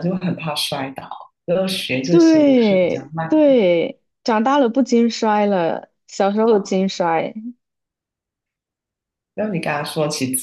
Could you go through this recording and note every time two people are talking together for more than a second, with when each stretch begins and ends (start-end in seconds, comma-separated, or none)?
2.1-3.6